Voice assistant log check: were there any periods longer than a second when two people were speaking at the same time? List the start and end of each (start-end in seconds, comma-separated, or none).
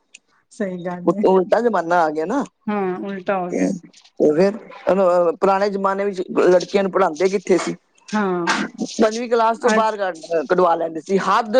none